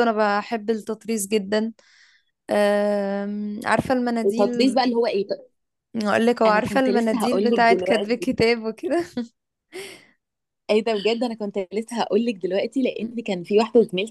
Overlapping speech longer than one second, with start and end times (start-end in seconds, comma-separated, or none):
6.5-8.4